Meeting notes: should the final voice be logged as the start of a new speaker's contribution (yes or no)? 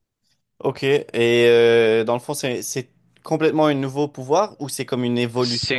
yes